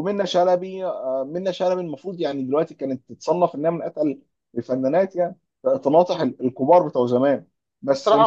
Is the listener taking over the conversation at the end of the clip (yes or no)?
yes